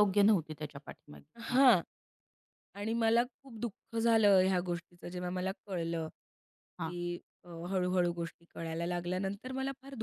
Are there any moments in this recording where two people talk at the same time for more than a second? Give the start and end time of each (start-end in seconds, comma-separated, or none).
none